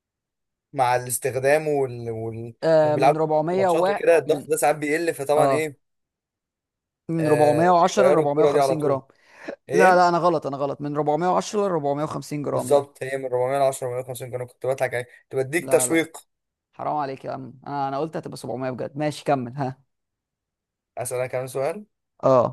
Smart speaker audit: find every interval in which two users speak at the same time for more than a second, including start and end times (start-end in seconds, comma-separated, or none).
2.6-4.5, 7.2-9.0